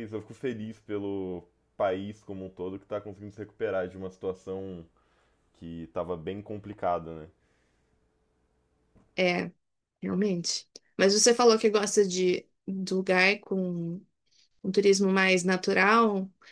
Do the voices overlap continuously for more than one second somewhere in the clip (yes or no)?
no